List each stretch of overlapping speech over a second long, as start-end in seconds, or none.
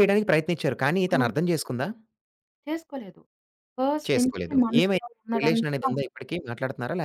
4.1-5.9